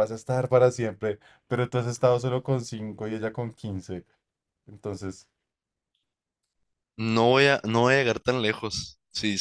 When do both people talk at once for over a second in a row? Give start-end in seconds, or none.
none